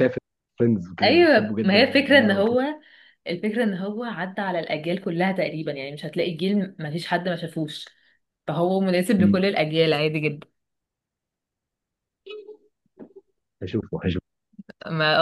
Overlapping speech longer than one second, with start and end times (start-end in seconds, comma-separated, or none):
1.0-2.6